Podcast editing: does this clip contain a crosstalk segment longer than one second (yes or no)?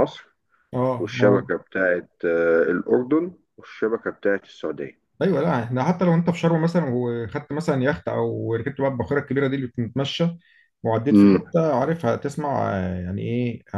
no